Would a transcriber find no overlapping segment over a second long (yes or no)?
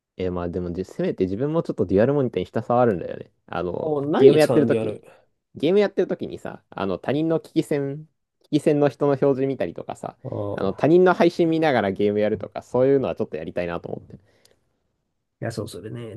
no